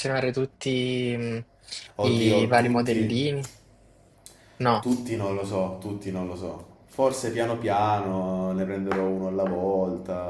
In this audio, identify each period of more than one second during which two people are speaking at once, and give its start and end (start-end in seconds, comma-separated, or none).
2.0-3.3